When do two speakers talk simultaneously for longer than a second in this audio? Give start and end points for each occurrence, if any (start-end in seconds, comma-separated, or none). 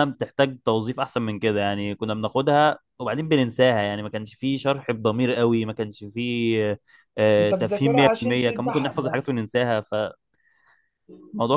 7.4-9.4